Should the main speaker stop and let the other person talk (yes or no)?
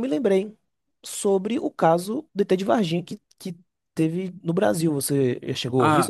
yes